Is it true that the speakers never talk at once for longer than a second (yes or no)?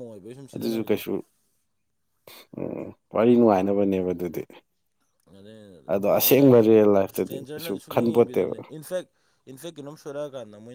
no